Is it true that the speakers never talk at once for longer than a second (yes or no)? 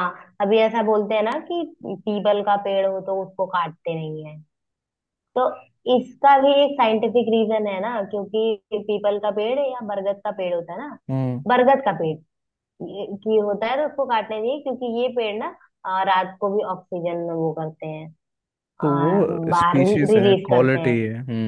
no